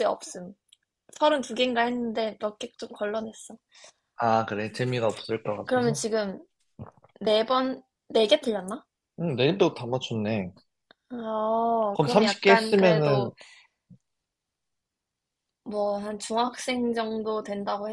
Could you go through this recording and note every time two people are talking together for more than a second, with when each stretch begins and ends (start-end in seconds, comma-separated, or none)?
11.9-13.3